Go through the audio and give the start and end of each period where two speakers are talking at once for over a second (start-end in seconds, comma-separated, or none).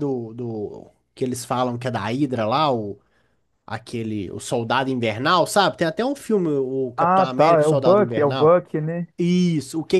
7.0-8.6